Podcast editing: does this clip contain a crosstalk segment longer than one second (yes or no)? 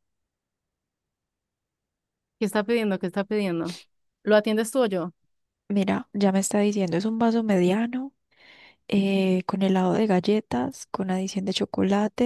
no